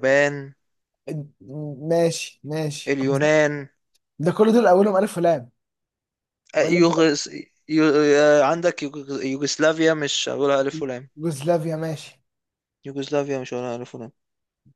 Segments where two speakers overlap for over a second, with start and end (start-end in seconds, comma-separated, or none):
none